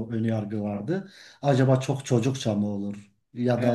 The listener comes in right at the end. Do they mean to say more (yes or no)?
no